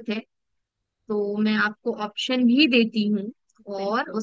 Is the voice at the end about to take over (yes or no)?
no